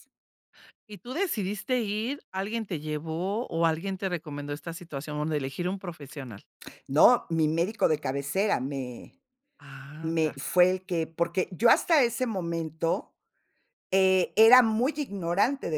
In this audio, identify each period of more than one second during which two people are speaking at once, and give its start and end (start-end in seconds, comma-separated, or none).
none